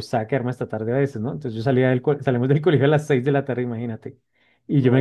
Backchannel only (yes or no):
yes